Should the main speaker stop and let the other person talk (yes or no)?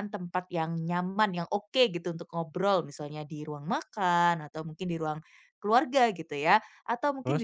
no